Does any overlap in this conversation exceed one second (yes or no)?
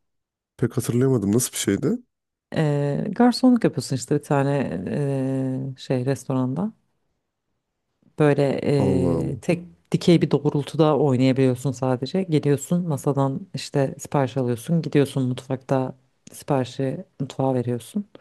no